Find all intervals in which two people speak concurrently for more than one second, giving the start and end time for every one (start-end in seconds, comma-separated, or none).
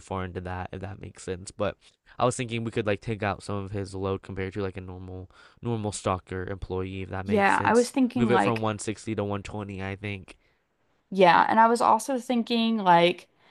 7.2-8.6